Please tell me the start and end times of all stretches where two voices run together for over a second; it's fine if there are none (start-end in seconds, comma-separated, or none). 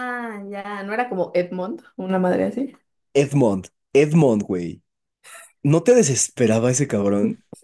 none